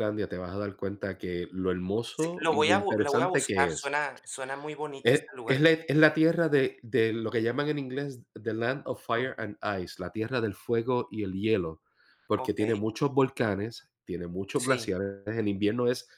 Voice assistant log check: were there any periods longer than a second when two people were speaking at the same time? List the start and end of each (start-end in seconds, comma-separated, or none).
2.1-3.9